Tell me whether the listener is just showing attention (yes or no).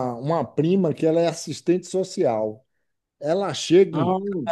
yes